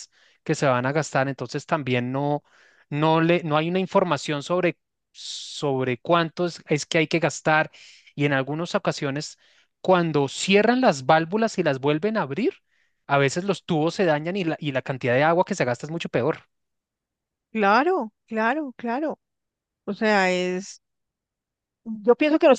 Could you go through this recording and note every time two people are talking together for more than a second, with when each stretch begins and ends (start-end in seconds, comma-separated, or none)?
none